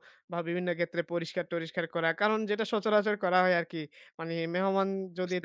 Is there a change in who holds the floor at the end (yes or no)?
no